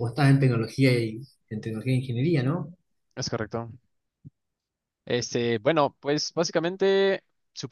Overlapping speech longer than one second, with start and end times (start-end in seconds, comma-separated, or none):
none